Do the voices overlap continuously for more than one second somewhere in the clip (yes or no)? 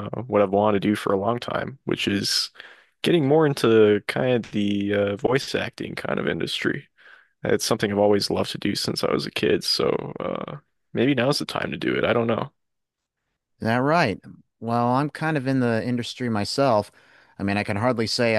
no